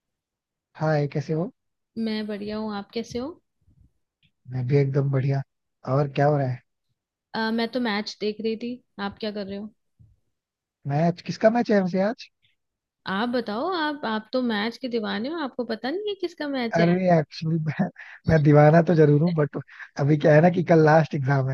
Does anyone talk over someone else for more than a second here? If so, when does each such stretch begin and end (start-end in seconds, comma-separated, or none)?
none